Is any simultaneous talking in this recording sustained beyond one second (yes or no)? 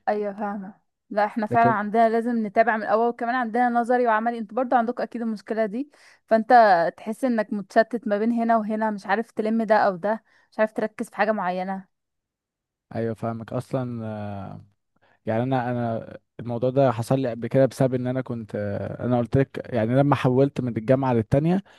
no